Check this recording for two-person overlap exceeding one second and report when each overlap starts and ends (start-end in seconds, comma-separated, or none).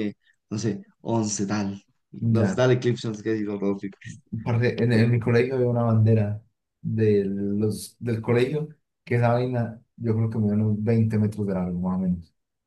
none